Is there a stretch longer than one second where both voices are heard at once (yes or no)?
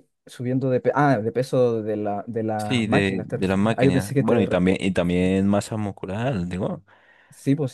yes